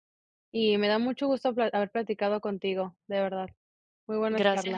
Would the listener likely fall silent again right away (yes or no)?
no